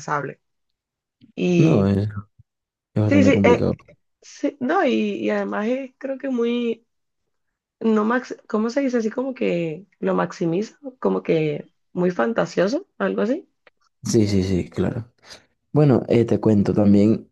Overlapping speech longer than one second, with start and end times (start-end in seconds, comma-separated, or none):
none